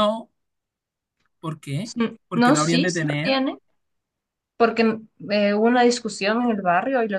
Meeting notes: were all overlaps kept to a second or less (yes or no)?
no